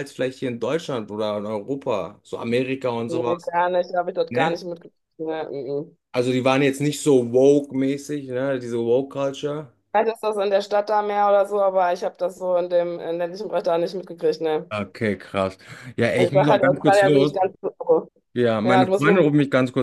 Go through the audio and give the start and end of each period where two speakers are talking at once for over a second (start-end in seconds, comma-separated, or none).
16.2-17.4